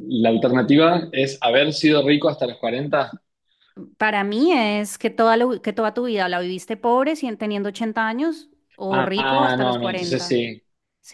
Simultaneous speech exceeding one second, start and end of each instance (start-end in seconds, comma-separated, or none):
8.9-10.4